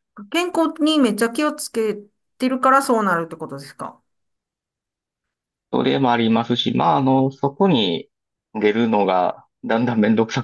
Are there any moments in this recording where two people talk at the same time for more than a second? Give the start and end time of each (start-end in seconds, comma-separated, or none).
none